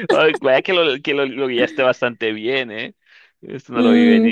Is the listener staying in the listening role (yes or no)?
no